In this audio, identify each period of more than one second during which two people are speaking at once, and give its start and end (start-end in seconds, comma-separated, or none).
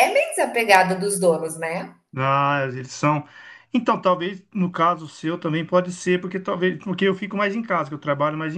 none